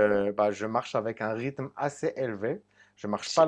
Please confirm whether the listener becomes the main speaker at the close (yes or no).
no